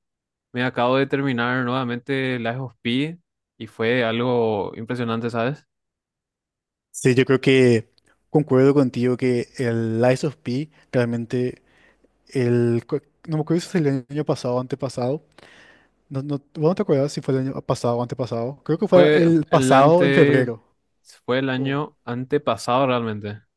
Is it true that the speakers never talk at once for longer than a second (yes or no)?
no